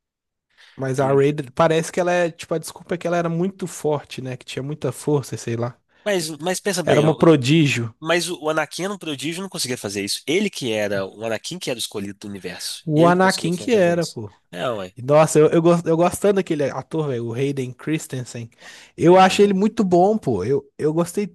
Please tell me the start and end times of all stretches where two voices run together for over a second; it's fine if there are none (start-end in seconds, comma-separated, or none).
12.8-14.3